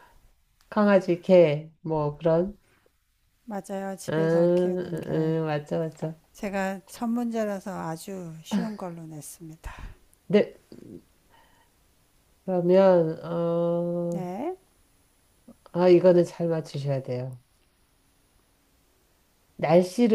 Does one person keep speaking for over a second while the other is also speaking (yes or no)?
yes